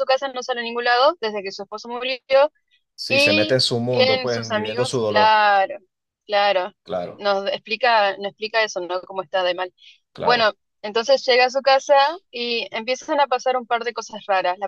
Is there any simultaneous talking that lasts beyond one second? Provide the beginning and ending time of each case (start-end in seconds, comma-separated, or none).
3.1-5.4